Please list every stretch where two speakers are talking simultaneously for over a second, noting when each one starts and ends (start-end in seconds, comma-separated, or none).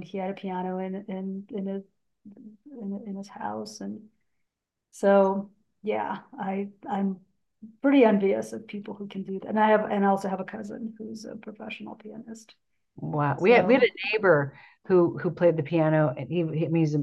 none